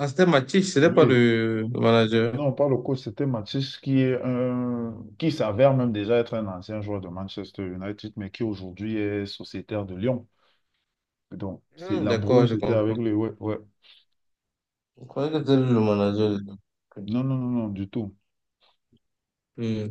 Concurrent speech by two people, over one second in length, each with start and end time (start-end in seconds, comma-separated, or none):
11.8-13.0